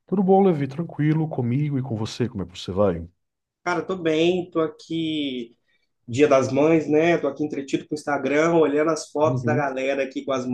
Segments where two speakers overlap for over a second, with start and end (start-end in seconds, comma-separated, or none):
none